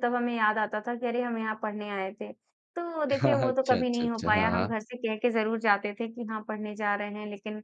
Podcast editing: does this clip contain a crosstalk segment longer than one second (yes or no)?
yes